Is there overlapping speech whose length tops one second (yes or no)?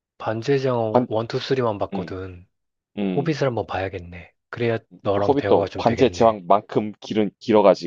yes